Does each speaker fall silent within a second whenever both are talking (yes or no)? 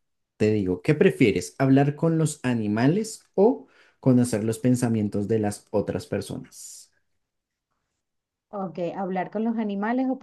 yes